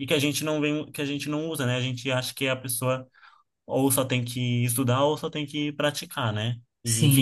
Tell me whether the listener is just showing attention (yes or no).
no